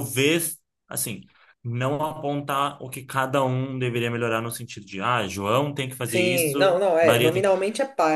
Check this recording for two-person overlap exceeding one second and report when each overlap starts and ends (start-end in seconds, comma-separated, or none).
6.1-7.4